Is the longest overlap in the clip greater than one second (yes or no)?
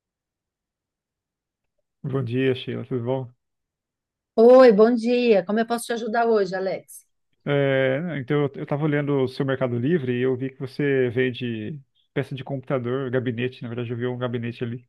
no